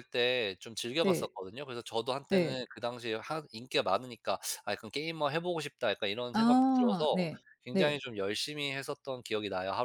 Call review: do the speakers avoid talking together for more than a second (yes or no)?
no